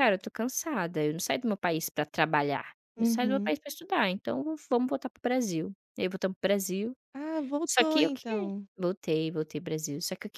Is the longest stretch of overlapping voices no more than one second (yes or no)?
yes